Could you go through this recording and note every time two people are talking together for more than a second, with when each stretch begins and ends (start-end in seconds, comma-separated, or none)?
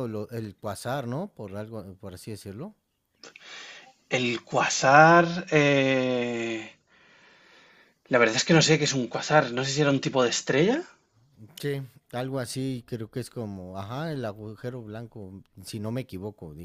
none